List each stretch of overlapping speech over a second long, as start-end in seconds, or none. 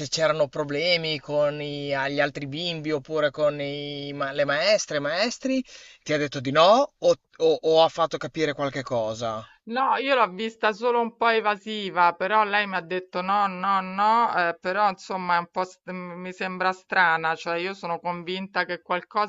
none